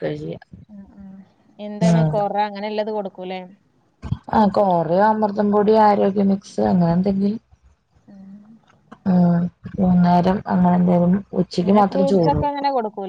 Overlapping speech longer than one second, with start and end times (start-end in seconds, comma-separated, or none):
none